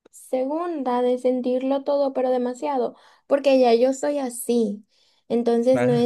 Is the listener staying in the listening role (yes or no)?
yes